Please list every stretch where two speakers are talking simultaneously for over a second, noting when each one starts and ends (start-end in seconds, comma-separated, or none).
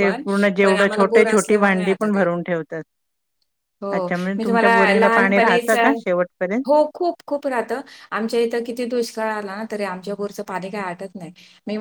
0.6-2.2, 3.9-5.7